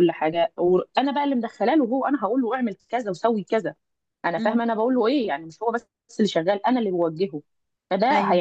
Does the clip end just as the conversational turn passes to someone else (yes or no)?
no